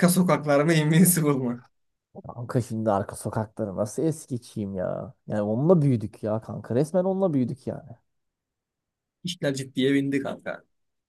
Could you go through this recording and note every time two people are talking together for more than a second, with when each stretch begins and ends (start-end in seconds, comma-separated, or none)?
none